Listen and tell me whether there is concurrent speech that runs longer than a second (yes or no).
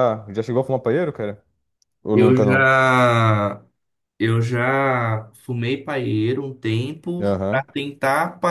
no